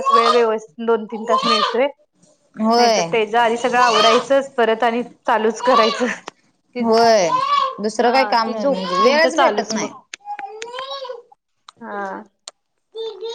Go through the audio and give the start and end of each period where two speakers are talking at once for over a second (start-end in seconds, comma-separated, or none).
8.0-9.9